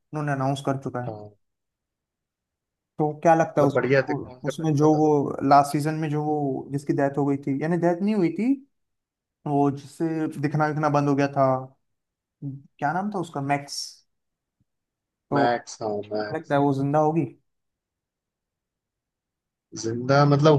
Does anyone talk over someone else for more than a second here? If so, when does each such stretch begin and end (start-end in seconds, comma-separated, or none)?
3.6-5.0